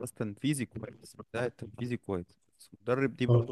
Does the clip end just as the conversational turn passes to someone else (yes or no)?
no